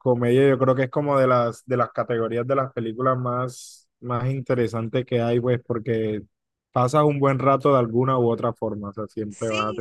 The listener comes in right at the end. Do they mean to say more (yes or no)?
yes